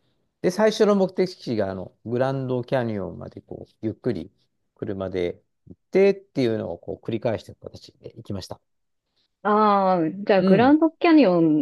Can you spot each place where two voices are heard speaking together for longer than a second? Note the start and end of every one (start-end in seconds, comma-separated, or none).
none